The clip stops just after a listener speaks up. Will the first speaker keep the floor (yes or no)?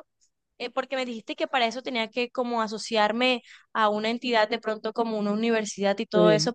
yes